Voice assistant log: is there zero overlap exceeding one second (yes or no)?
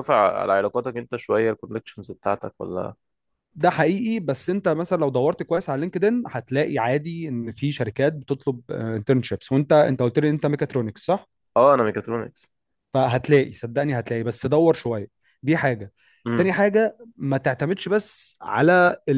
yes